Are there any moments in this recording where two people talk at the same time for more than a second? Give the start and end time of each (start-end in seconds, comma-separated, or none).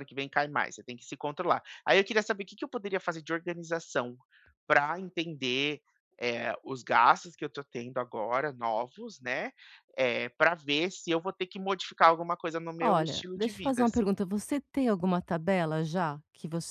12.8-14.1